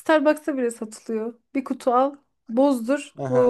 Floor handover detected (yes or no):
yes